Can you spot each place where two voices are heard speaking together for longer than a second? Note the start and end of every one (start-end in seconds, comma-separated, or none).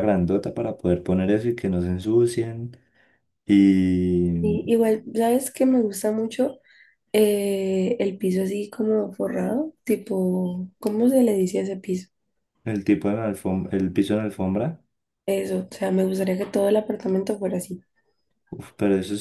none